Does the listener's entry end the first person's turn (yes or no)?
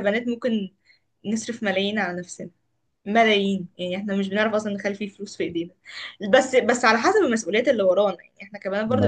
no